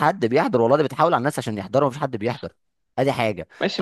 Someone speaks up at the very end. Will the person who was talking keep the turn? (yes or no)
no